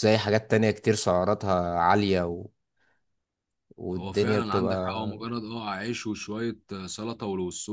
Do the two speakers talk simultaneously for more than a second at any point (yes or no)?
yes